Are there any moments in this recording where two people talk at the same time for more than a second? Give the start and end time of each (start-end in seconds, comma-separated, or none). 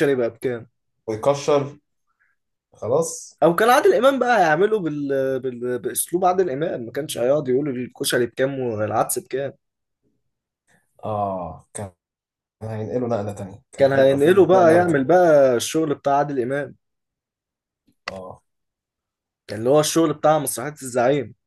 13.8-15.1